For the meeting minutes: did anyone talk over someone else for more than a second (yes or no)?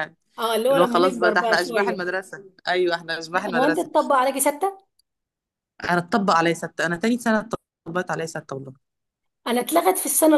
yes